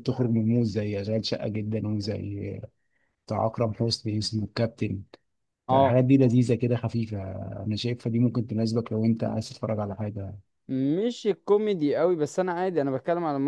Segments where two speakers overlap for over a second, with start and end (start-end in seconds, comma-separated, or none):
none